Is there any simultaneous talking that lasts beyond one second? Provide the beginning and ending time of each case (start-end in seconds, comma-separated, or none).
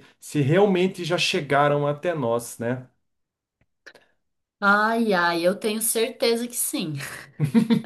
none